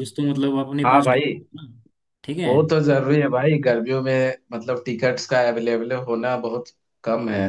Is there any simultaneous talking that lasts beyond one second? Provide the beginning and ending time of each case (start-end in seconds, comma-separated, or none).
none